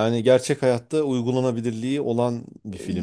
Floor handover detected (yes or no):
no